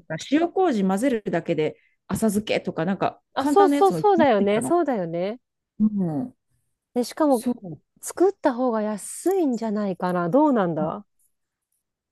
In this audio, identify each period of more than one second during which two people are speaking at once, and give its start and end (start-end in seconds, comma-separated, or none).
3.3-4.7